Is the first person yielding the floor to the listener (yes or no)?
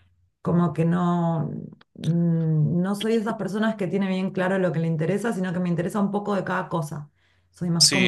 yes